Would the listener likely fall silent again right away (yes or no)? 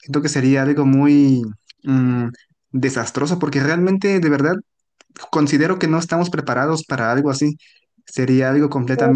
no